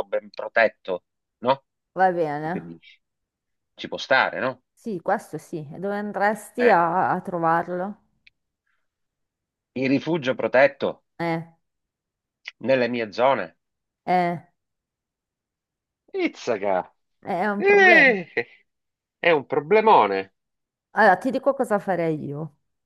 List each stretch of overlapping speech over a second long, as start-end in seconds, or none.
none